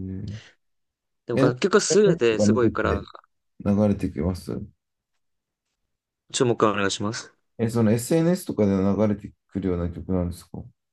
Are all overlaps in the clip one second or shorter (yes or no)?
no